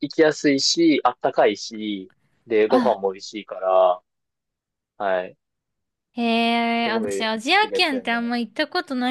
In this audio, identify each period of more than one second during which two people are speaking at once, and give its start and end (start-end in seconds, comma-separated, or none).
6.9-8.3